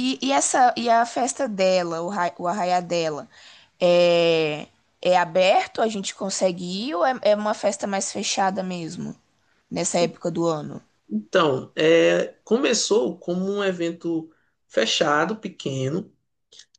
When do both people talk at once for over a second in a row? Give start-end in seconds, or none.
none